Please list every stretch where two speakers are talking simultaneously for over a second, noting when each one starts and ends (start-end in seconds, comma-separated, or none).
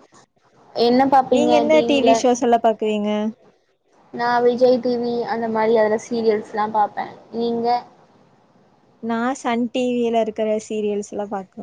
none